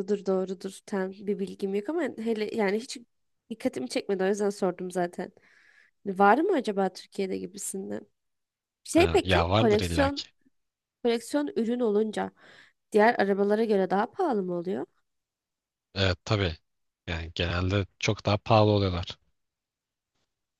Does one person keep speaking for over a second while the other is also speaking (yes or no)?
yes